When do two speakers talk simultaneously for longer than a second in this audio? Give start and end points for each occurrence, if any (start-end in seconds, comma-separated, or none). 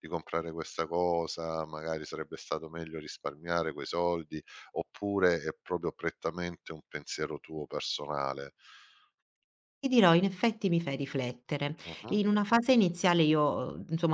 none